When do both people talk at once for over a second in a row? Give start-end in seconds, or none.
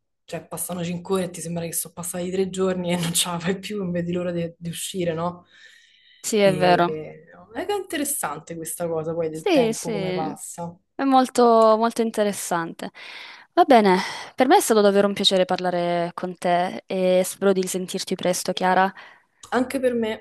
9.3-10.8